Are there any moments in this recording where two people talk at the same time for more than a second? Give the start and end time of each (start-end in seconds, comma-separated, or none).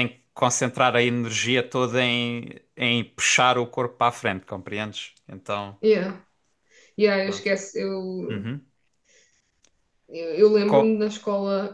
none